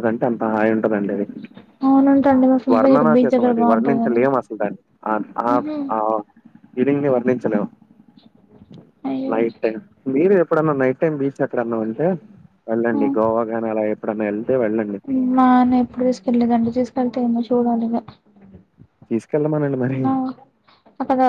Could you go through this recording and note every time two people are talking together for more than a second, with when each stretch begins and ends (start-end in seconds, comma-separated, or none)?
2.7-4.2